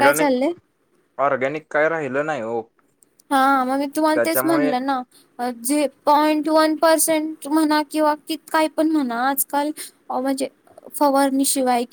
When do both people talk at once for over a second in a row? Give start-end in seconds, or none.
none